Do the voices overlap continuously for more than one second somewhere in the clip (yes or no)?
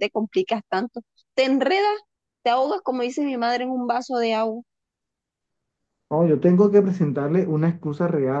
no